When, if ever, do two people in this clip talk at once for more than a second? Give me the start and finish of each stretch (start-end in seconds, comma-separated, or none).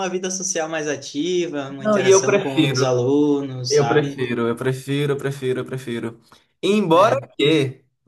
1.8-3.0